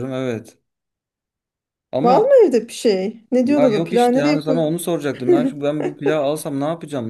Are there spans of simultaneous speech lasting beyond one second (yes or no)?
yes